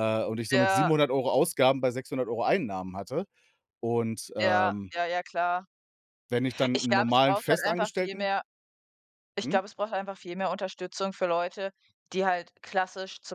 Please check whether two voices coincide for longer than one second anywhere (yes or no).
yes